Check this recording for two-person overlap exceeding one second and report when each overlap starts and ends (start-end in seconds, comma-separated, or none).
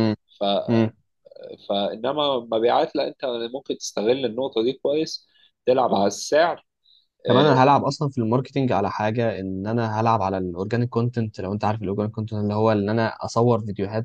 none